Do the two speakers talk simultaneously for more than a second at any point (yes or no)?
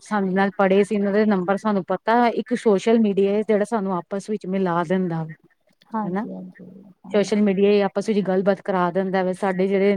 no